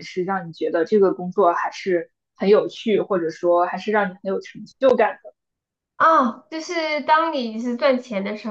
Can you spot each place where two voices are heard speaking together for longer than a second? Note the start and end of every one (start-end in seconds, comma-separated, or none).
none